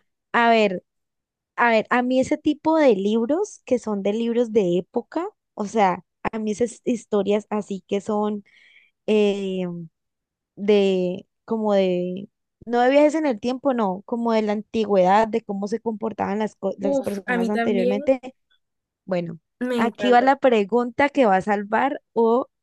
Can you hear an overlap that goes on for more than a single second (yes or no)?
yes